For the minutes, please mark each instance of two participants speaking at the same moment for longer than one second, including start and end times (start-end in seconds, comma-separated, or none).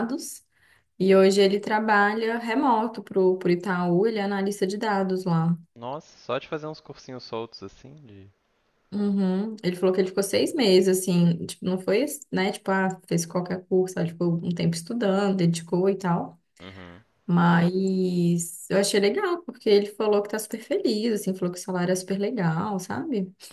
none